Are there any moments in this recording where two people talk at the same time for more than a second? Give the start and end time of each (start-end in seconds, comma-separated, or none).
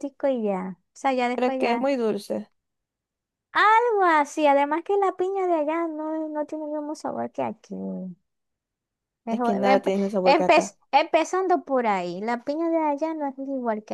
9.3-10.8